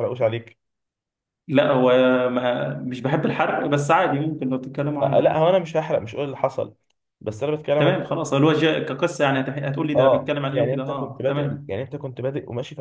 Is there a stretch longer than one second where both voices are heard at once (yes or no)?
yes